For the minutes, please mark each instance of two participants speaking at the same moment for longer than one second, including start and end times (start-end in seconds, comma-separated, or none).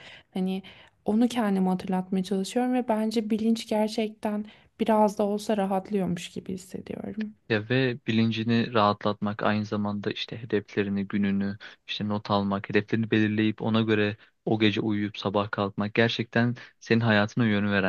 none